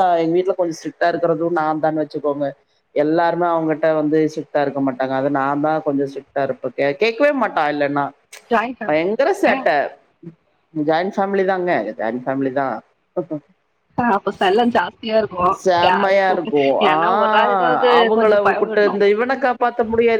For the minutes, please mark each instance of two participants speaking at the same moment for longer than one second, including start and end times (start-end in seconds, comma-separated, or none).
16.9-18.9